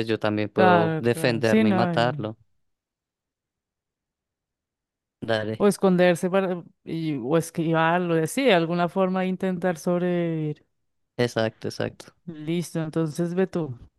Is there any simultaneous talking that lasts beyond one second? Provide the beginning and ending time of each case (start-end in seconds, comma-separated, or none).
0.6-2.1